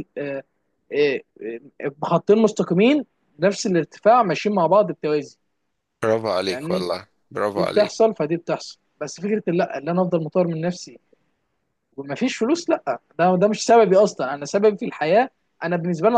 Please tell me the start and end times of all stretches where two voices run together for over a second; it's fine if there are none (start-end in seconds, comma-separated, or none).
none